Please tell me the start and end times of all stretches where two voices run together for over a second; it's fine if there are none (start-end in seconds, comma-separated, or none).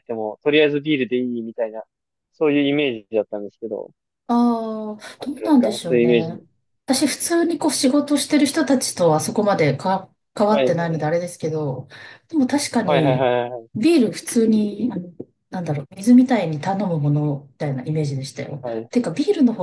5.2-6.4